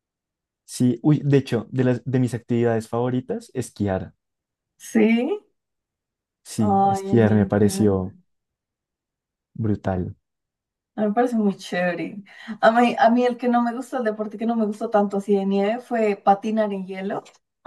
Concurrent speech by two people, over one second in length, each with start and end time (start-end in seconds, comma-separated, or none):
6.6-8.1